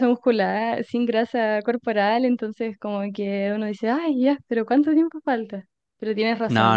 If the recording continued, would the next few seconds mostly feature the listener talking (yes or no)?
no